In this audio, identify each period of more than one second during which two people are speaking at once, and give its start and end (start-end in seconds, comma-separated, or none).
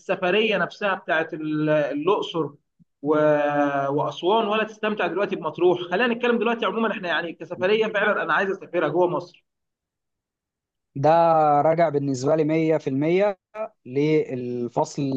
none